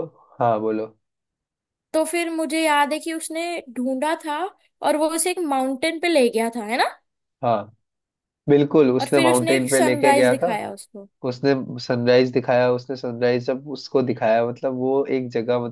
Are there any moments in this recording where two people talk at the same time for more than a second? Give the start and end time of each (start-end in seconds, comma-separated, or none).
9.0-10.5